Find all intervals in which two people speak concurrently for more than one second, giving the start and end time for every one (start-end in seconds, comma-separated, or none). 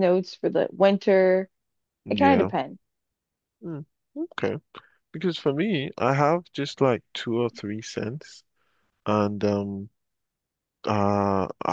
none